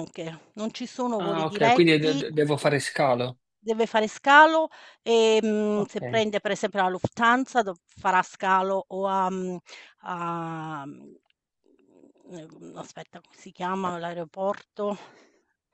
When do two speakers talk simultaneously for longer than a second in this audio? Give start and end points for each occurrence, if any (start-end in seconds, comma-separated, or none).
1.2-2.8